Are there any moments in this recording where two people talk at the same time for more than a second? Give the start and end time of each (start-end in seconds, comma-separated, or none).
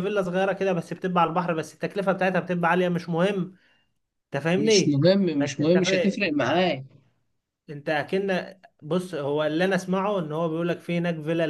4.6-6.5